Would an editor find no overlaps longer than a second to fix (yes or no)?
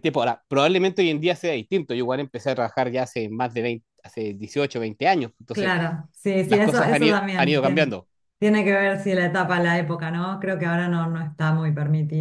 no